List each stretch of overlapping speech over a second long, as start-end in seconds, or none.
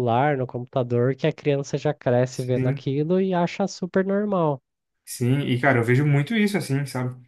none